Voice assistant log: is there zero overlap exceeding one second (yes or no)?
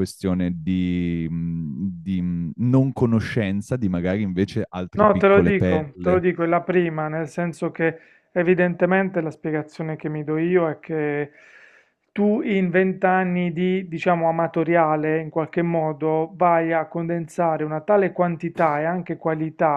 no